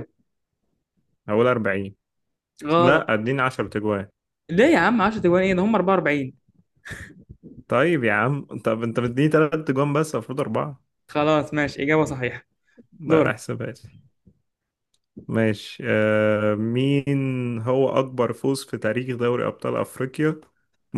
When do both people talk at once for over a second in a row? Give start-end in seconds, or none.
none